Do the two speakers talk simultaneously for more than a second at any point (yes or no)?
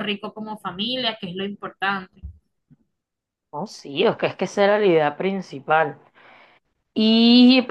no